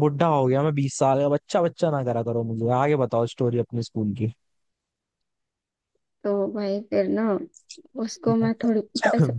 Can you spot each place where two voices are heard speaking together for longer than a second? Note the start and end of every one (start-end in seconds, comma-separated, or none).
none